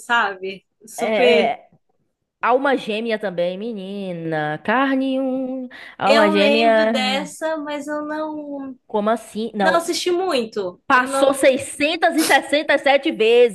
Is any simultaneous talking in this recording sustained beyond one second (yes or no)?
yes